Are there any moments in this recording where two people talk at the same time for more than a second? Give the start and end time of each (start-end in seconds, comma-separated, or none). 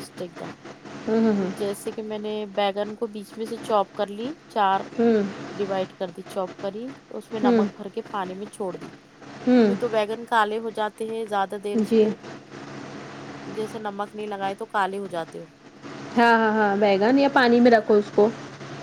none